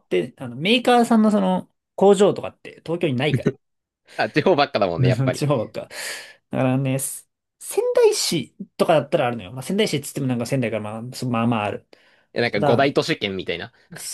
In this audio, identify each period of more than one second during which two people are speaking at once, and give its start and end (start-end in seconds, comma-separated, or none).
none